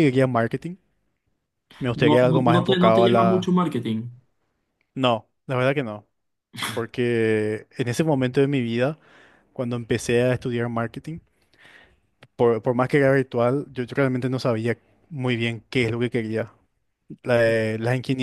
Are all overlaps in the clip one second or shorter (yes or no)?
no